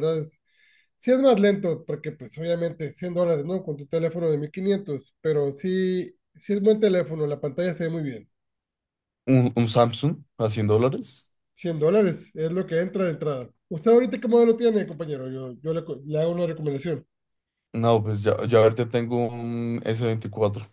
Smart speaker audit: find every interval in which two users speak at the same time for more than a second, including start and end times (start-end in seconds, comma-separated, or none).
none